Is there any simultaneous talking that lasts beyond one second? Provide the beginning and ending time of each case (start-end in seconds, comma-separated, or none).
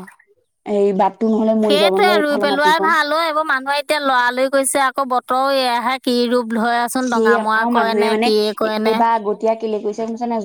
7.1-9.0